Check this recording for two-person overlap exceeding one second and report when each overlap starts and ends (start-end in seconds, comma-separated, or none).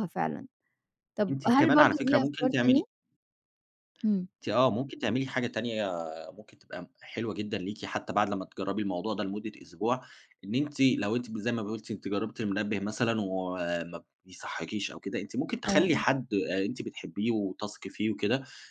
1.3-2.9